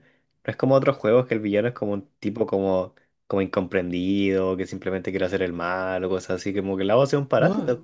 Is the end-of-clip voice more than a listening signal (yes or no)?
no